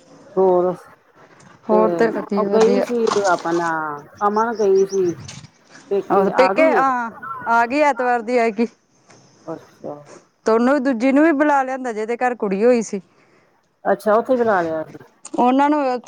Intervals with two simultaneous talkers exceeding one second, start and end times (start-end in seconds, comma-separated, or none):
none